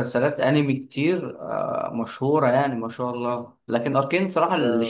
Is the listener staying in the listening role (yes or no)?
yes